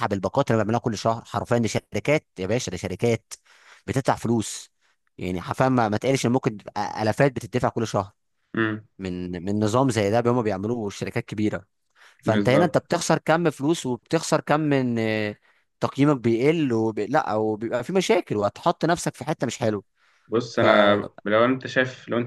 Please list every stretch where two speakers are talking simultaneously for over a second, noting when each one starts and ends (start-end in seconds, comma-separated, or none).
none